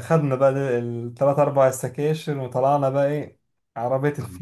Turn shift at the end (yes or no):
no